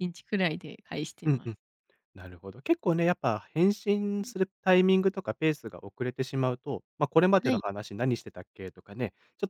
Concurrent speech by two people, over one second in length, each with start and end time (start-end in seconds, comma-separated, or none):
none